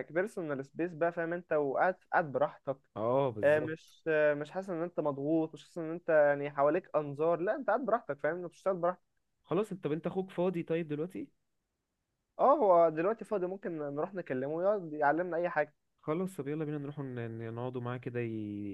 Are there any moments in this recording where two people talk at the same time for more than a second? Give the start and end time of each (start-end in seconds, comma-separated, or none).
none